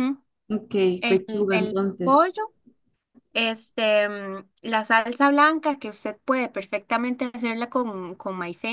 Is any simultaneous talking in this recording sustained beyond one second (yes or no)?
yes